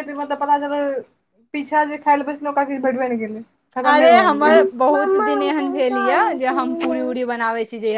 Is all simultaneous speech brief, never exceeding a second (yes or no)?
no